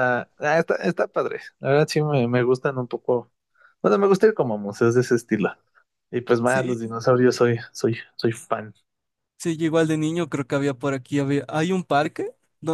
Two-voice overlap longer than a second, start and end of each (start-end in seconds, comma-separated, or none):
none